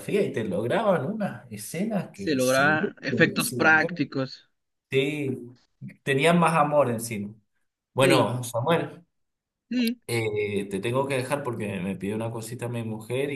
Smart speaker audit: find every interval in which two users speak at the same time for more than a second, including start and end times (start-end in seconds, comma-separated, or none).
2.1-4.0